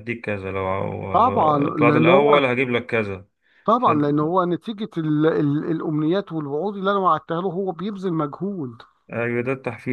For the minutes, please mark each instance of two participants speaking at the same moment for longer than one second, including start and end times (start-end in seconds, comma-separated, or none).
1.1-2.4